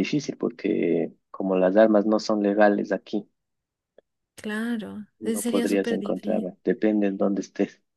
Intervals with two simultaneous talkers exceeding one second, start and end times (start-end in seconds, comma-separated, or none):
5.2-6.5